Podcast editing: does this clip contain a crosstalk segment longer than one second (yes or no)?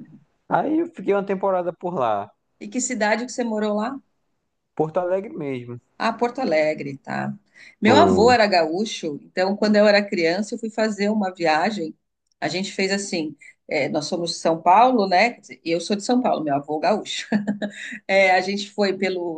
no